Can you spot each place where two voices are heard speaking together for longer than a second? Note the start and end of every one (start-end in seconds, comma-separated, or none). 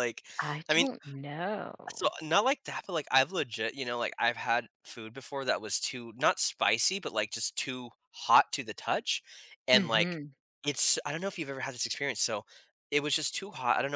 none